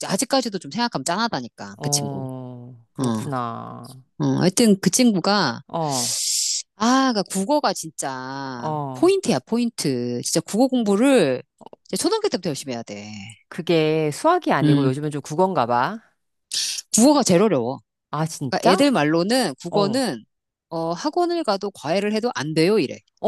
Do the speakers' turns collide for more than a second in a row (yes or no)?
no